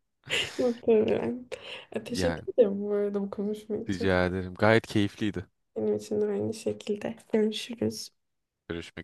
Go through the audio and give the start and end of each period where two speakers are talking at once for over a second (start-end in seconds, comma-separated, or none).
none